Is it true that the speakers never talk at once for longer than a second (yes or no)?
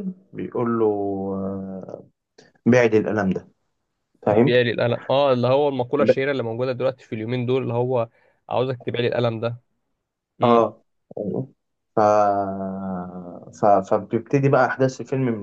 yes